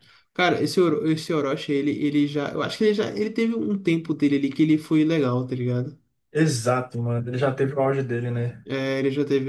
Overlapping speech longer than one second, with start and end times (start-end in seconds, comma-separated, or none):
none